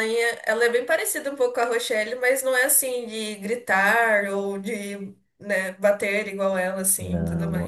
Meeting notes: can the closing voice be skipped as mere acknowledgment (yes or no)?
no